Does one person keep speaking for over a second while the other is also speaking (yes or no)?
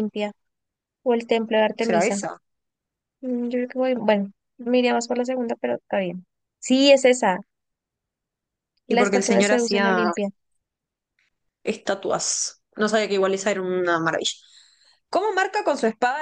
yes